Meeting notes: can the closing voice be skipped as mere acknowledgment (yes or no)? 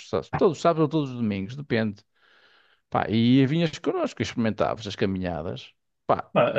no